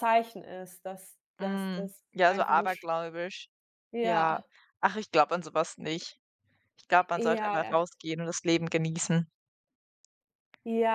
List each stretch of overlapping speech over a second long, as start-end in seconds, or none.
1.4-2.9